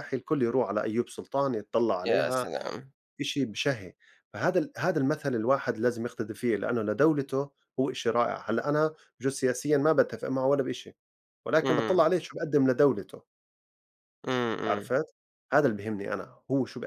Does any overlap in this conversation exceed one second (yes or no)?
no